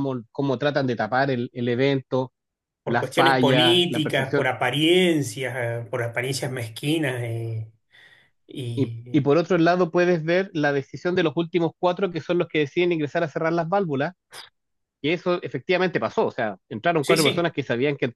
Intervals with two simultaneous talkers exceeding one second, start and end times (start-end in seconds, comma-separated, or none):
2.9-4.5